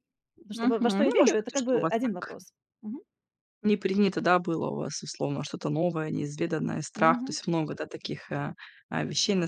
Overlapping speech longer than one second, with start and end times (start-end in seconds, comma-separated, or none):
0.5-2.4